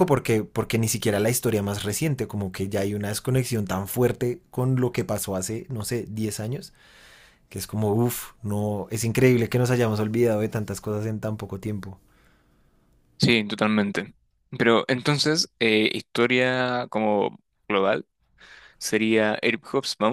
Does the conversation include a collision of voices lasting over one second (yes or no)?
no